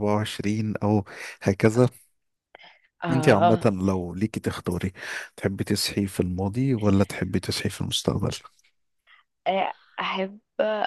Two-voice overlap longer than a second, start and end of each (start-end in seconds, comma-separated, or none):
none